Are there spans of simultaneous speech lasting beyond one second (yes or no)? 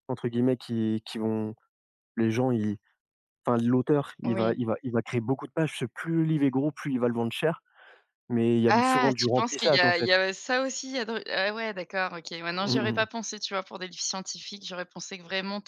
yes